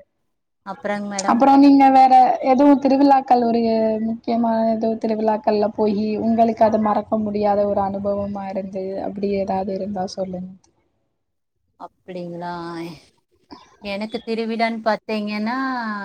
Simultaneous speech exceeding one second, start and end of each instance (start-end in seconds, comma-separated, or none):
none